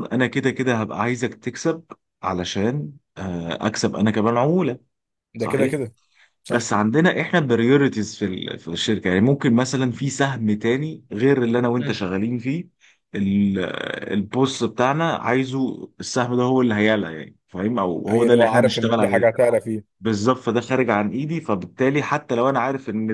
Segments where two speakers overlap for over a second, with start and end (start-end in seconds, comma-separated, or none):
18.1-19.4